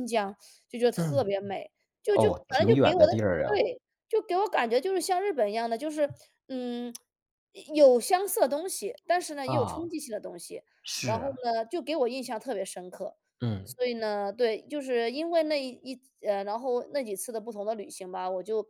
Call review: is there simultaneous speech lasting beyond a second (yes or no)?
yes